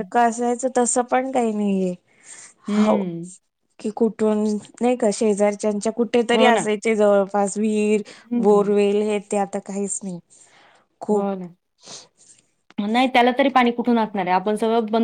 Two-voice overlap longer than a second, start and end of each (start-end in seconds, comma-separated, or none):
none